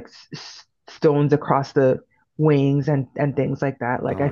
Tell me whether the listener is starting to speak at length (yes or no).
yes